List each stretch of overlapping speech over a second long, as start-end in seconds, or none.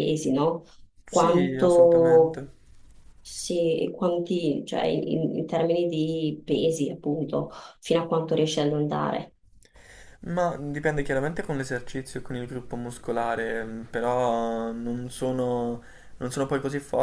1.1-2.5